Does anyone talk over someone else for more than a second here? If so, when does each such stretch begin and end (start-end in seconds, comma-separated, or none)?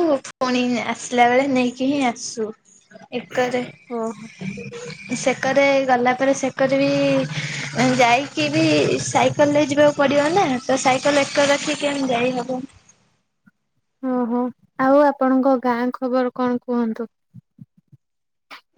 none